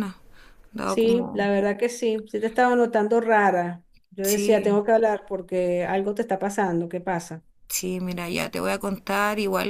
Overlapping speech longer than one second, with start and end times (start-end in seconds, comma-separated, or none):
none